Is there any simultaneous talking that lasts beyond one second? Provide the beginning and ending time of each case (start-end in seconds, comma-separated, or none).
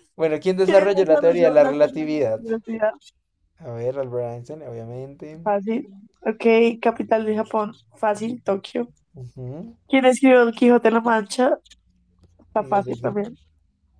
0.7-2.4